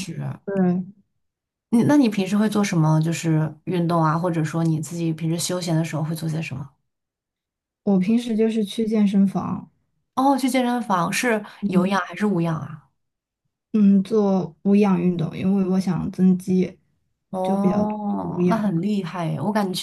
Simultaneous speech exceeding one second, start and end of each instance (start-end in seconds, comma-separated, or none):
17.4-18.7